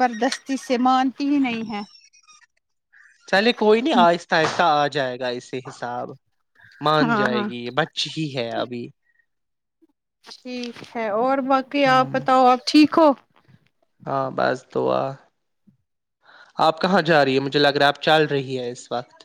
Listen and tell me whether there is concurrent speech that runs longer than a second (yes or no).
no